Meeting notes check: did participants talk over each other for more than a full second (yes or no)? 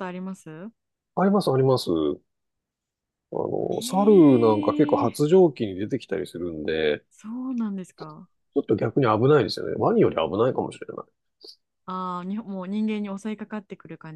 yes